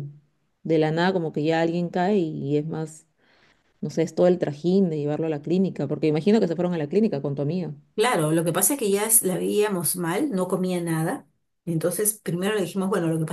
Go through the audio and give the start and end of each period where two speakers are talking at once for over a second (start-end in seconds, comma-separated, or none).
none